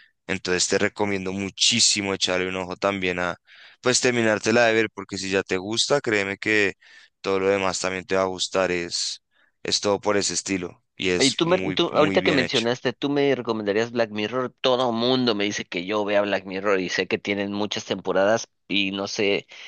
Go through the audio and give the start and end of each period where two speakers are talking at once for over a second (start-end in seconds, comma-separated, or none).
11.2-12.7